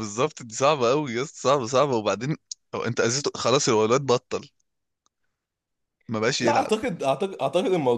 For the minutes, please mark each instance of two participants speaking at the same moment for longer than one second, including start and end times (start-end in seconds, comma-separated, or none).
none